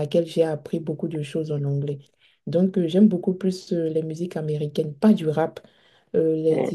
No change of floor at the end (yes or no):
yes